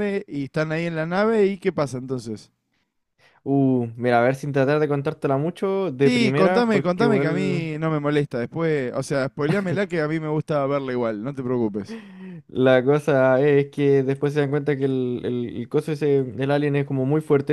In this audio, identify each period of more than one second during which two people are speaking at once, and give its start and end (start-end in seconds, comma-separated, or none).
6.0-7.7